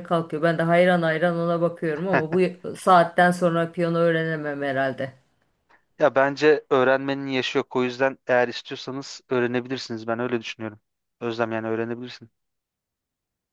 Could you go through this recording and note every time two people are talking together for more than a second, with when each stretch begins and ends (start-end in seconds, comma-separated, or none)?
none